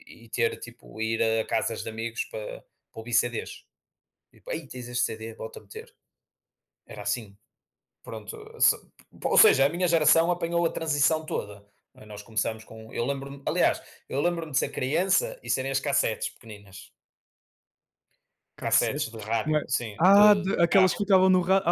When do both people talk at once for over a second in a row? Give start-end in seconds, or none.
18.6-21.1